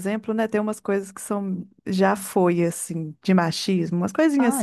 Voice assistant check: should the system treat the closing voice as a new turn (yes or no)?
yes